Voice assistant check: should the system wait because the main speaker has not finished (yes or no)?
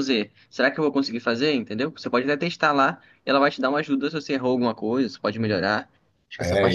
no